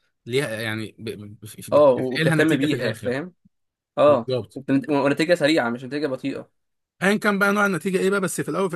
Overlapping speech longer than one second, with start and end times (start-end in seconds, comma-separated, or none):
1.7-3.1